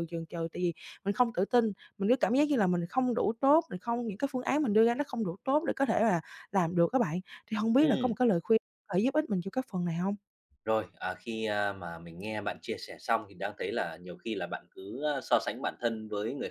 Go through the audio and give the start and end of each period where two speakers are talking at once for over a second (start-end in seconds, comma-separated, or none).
none